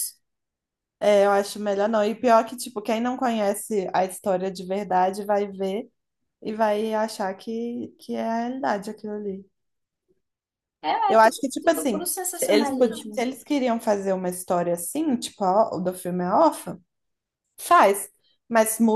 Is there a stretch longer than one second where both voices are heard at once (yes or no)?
yes